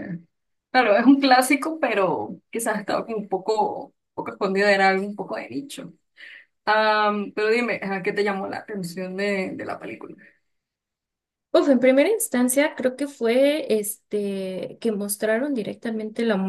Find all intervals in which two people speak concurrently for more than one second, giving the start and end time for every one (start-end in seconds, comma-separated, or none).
none